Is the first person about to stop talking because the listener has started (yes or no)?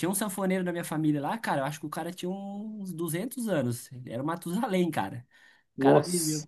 no